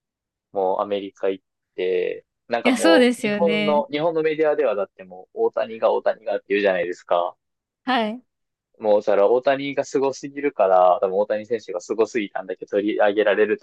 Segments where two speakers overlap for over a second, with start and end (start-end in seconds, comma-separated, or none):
2.6-3.8